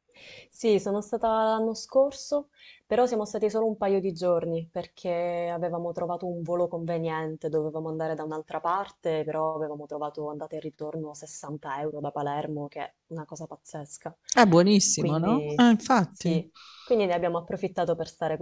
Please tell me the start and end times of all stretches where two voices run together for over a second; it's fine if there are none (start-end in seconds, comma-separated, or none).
14.9-16.4